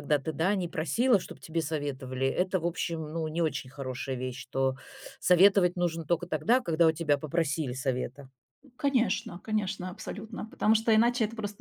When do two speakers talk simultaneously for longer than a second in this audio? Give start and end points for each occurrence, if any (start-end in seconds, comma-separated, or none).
none